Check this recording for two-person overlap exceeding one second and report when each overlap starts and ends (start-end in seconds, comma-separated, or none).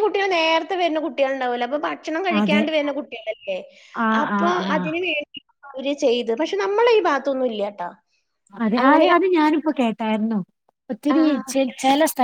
none